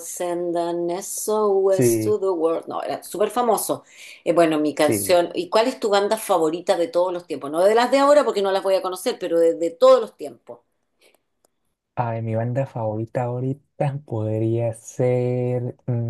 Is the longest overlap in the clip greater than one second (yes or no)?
no